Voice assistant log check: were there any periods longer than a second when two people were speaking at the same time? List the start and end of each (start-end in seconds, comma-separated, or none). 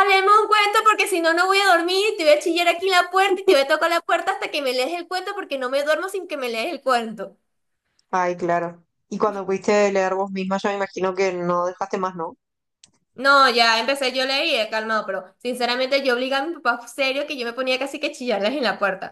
none